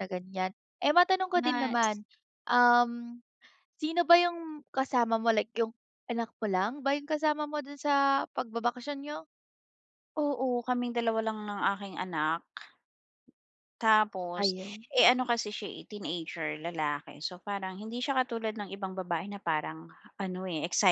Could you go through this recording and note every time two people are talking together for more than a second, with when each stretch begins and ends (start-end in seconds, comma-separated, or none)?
none